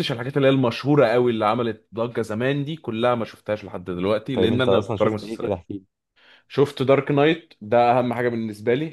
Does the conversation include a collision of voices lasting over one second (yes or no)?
yes